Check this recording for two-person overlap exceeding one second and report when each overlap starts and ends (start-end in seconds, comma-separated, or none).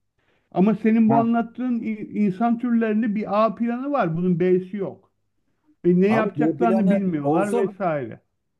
6.1-7.8